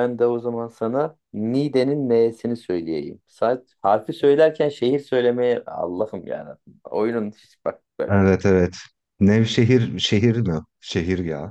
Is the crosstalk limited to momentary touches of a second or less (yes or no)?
yes